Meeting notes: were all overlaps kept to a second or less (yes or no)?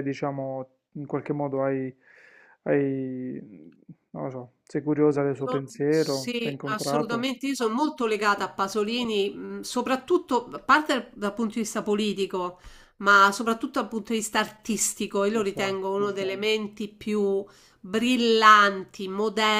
no